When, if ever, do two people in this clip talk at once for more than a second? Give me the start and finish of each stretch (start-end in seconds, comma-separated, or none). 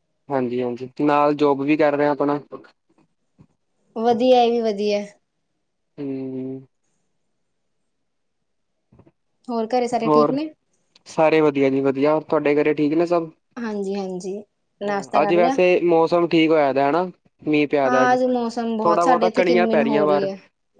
18.8-20.3